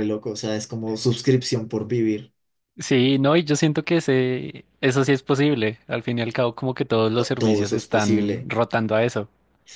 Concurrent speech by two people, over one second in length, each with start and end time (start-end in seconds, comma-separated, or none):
7.2-8.5